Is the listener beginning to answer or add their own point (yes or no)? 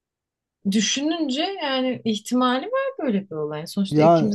no